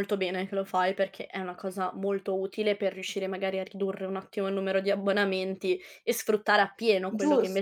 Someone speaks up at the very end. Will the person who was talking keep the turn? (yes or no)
no